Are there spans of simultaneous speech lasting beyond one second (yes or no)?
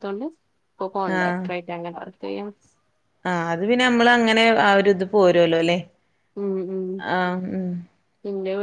no